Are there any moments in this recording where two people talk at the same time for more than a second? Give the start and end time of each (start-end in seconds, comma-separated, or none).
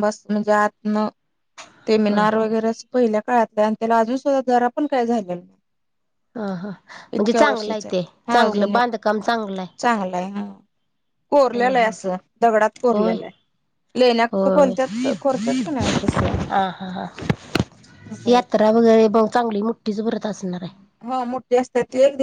7.2-8.8